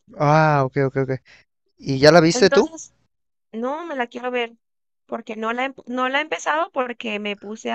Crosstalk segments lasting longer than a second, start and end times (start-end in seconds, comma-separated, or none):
none